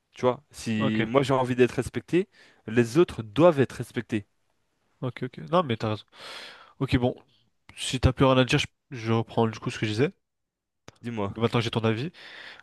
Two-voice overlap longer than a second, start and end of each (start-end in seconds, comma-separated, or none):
none